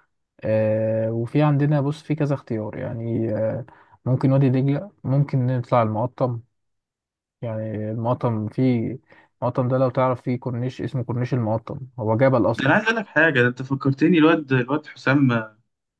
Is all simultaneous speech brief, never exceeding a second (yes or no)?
yes